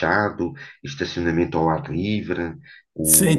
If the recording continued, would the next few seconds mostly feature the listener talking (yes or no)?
yes